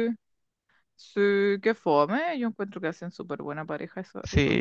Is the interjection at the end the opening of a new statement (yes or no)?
yes